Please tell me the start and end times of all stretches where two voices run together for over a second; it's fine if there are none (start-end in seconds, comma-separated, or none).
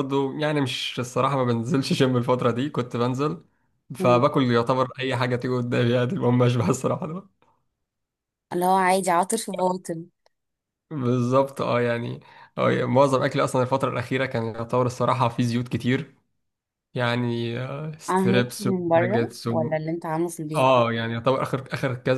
18.1-19.8